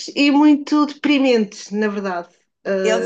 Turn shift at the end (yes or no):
yes